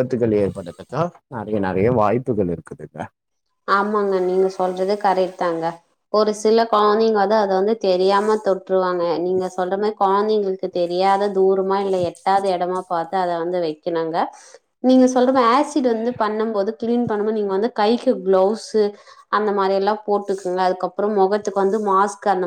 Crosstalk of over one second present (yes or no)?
no